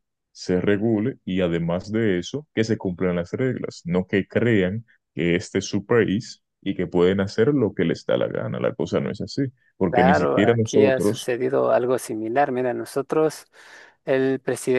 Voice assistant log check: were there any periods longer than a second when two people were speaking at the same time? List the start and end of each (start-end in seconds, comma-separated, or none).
9.9-11.3